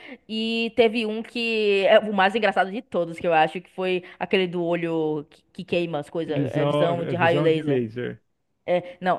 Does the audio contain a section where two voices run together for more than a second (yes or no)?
yes